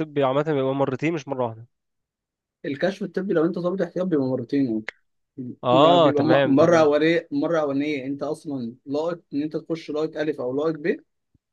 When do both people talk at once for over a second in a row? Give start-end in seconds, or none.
5.7-6.9